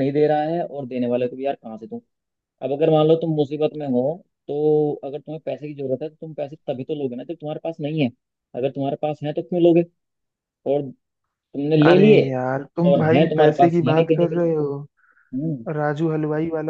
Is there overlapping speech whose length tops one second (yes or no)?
yes